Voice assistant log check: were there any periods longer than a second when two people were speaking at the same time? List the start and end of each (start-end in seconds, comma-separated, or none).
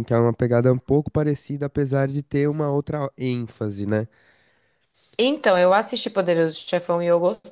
none